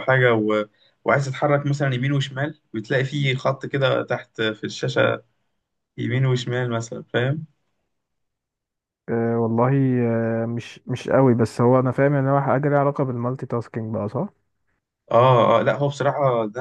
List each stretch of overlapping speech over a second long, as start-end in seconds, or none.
none